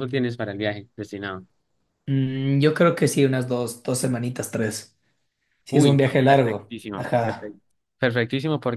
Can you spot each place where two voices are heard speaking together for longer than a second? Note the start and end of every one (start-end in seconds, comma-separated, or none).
5.7-7.5